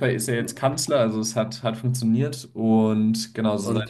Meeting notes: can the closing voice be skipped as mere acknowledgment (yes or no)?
no